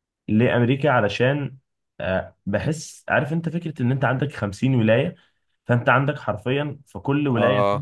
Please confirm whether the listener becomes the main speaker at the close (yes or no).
no